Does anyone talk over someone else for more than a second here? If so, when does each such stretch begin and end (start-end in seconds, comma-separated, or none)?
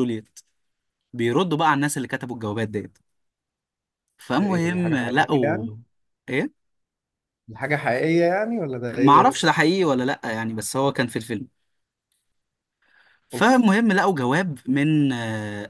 4.3-5.7